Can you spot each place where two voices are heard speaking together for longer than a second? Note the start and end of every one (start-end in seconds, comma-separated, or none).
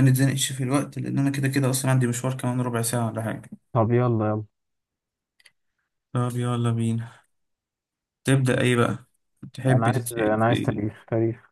9.7-11.0